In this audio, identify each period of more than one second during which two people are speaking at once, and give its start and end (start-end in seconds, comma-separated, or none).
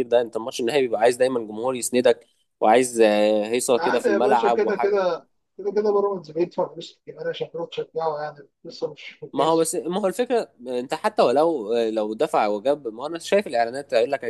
3.8-5.0